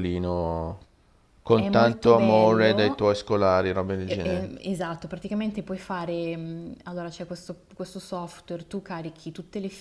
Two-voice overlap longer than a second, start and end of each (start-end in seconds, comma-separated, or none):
1.5-3.0